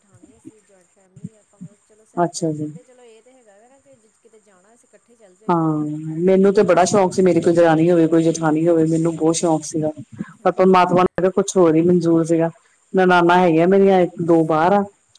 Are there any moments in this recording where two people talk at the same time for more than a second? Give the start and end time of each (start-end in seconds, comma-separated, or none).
none